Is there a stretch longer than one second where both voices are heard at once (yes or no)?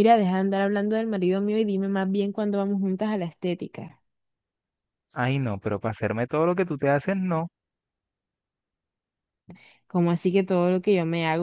no